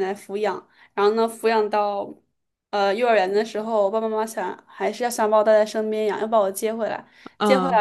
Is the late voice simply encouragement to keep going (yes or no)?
yes